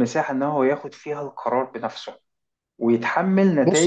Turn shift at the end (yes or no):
no